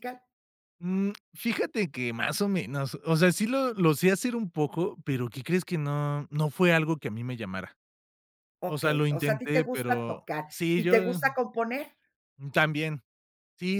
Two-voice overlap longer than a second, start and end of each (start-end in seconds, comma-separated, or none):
8.6-11.2